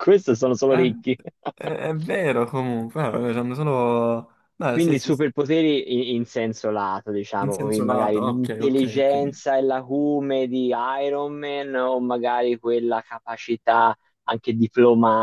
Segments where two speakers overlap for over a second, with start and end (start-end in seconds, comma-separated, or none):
7.4-9.4